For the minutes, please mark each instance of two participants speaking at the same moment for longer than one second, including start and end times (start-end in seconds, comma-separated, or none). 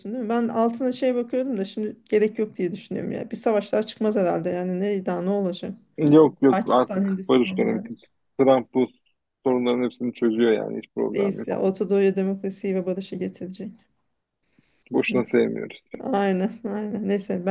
6.5-7.8